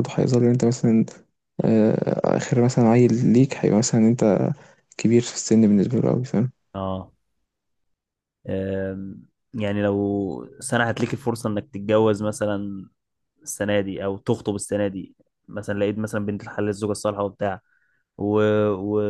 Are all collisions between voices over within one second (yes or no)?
yes